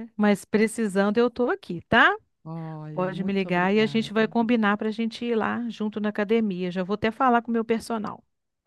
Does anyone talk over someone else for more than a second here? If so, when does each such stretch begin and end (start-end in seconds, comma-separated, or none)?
2.9-4.3